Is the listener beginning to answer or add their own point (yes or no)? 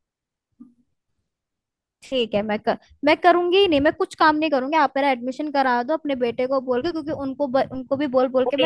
yes